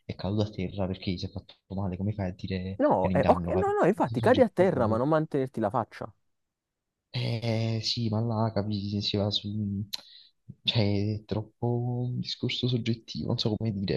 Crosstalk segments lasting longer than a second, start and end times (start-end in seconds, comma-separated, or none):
2.8-5.0